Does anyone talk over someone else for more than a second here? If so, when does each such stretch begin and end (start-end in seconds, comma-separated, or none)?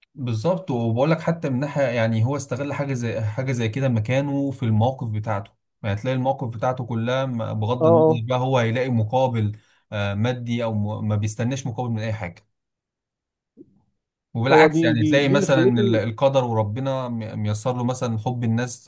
14.5-16.0